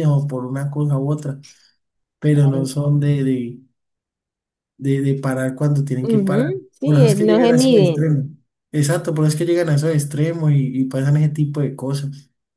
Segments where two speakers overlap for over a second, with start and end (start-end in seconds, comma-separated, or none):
6.0-8.1